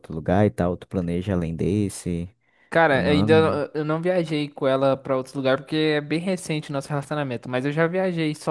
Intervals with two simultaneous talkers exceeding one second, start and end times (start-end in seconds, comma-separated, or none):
none